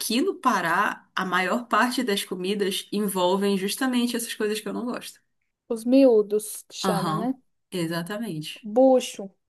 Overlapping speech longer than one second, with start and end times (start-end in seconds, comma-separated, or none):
none